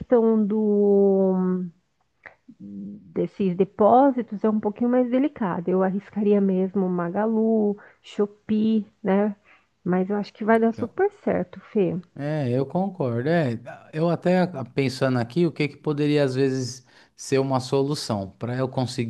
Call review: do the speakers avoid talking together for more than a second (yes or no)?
yes